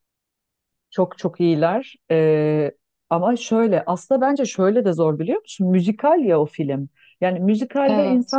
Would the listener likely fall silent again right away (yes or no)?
yes